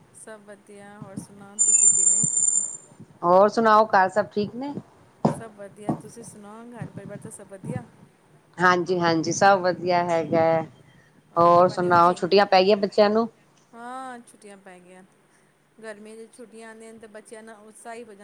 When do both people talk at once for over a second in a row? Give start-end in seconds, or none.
none